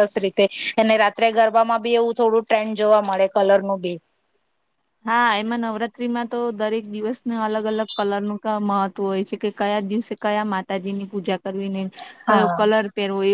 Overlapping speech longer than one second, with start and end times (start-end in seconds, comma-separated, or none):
none